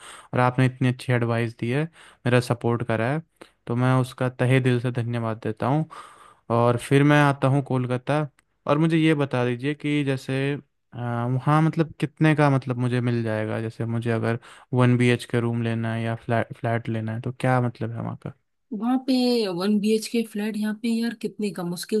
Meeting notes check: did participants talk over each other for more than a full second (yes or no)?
no